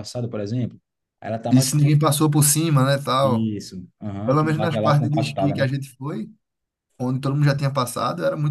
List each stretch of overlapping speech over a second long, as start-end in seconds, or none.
4.2-5.7